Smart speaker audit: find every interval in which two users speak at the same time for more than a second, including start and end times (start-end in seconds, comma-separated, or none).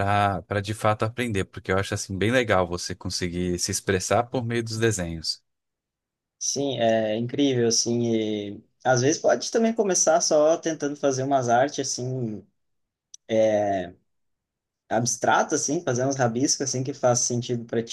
none